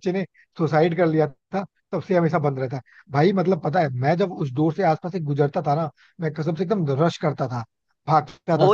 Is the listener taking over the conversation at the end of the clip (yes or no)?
yes